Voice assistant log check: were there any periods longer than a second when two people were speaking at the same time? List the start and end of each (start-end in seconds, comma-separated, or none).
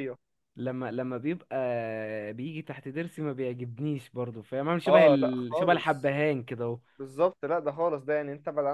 4.9-6.1